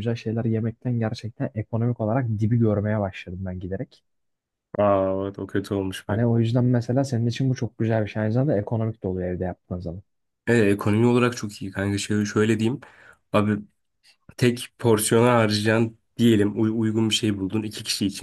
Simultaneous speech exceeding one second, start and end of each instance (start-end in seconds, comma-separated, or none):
none